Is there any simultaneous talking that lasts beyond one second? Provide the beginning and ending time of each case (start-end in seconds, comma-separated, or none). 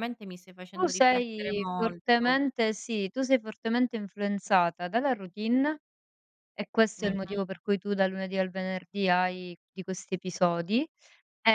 0.8-2.4